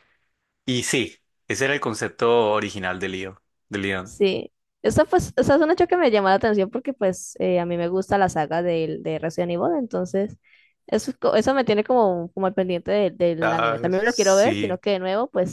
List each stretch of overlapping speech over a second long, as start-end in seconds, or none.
13.4-14.8